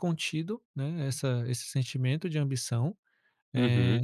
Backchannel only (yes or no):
yes